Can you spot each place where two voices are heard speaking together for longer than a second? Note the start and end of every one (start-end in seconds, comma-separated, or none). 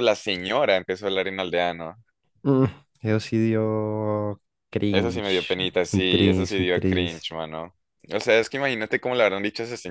4.9-7.3